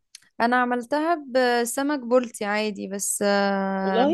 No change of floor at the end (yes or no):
yes